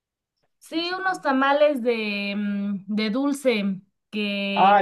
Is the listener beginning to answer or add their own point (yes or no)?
yes